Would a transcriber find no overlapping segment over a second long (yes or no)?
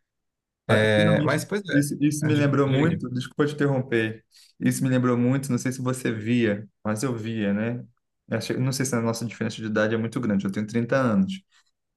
no